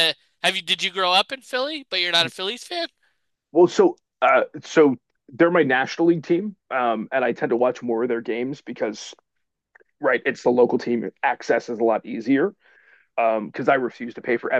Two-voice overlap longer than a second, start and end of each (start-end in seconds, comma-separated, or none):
none